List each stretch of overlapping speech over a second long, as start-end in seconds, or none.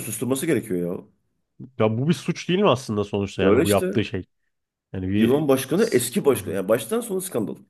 none